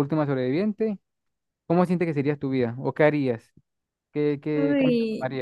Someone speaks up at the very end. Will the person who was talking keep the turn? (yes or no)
no